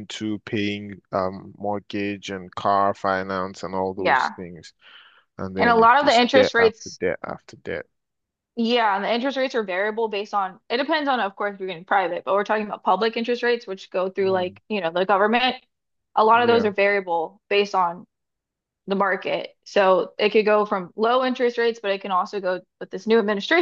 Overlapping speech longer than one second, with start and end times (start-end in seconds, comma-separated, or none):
5.6-7.0